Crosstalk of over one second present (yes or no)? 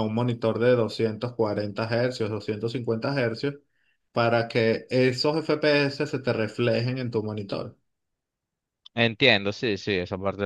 no